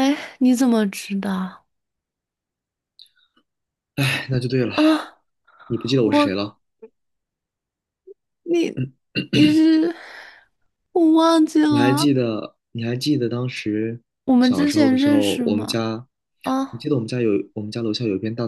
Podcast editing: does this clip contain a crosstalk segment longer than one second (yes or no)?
yes